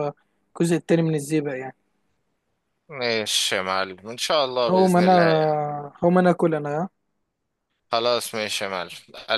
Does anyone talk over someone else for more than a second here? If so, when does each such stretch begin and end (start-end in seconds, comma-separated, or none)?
none